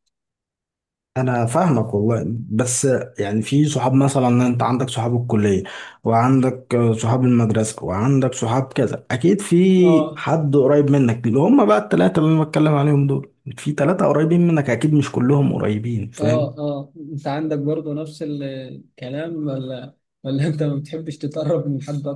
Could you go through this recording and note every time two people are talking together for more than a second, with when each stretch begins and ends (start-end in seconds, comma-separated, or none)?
none